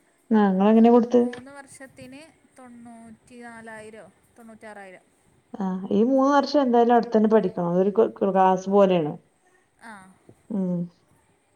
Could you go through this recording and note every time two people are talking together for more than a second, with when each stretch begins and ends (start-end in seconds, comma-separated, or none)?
none